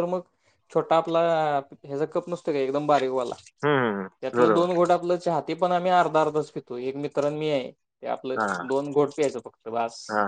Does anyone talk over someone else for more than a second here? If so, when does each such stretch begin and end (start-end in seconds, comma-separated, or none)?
none